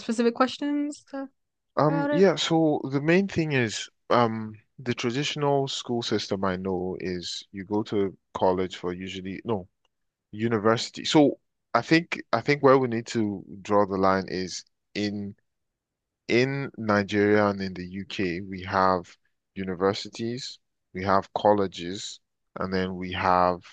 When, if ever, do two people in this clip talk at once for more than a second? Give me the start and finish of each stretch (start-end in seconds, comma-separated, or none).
none